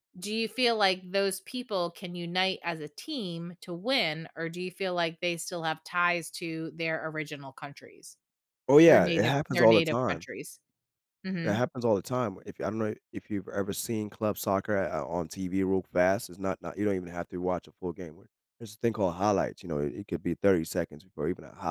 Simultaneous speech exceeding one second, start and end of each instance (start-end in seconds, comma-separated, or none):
8.9-10.3